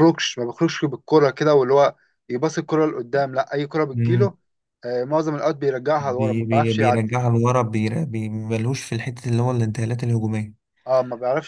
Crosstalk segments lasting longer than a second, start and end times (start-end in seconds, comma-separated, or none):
6.0-7.2